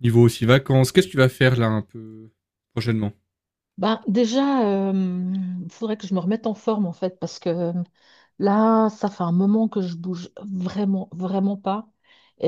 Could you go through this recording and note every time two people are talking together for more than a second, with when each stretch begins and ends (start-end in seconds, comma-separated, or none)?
none